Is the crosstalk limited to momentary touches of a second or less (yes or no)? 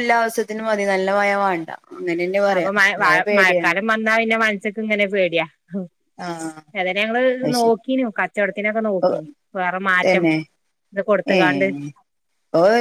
yes